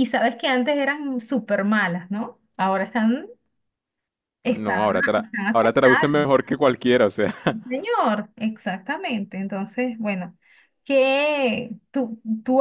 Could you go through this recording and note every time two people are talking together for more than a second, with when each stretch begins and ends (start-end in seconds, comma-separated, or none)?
4.5-6.3